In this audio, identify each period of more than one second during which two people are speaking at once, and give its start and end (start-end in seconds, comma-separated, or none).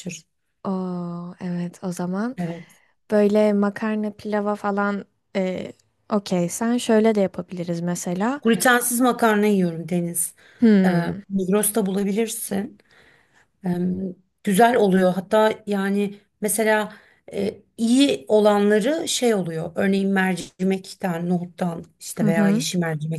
none